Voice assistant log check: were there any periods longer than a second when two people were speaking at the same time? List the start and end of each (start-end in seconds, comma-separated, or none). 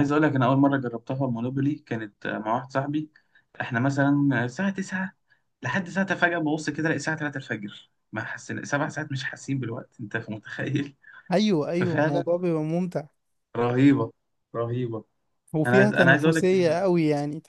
15.7-16.9